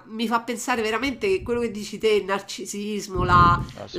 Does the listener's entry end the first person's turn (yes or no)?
no